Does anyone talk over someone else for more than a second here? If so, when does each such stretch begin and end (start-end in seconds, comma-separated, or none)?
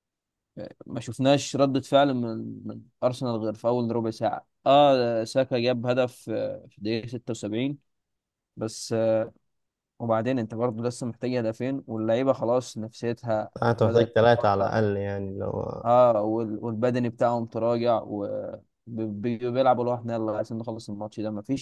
none